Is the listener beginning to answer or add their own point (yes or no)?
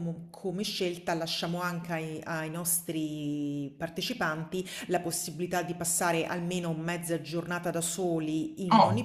yes